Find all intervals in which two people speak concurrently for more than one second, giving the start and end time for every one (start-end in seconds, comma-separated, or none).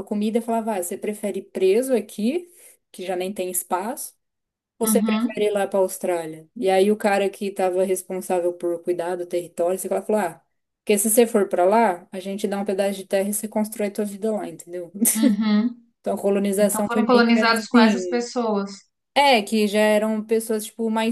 16.6-18.3